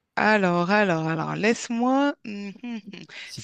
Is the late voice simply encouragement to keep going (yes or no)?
yes